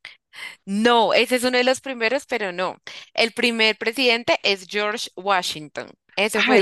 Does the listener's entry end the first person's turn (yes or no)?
yes